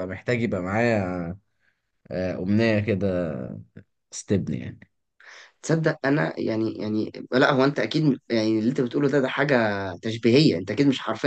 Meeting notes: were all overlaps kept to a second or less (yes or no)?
yes